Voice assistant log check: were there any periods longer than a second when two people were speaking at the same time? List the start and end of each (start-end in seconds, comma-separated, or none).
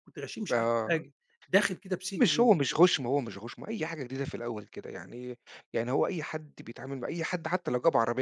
none